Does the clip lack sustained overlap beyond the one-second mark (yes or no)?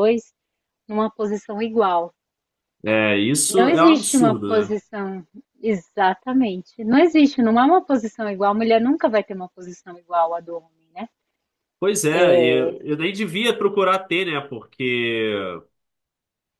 no